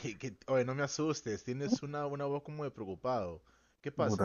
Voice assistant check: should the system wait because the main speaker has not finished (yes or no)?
no